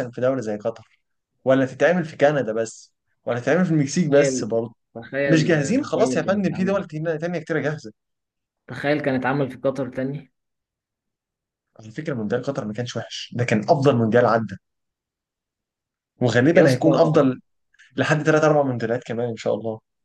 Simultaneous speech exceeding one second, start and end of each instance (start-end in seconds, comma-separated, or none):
5.2-6.8